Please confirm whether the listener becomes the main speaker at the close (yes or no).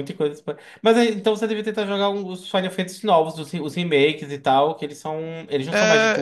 yes